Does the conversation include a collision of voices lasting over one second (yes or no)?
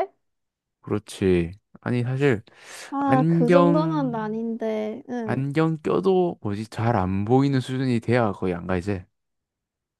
yes